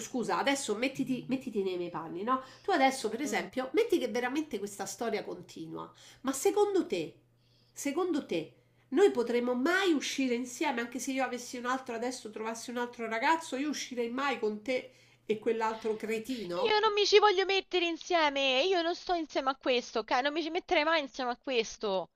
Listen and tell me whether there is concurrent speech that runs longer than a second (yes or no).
no